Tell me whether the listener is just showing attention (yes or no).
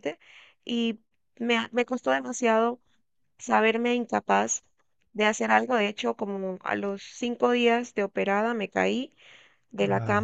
yes